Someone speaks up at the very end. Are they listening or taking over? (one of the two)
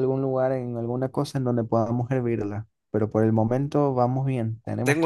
taking over